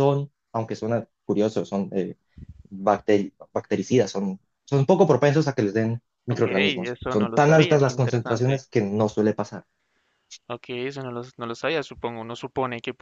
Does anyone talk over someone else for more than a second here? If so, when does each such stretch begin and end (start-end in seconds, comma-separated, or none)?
6.3-8.6